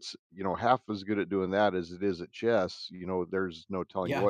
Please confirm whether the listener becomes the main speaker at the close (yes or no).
no